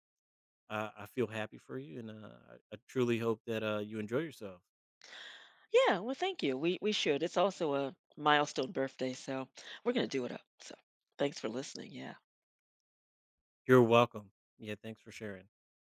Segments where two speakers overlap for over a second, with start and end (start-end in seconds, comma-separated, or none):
none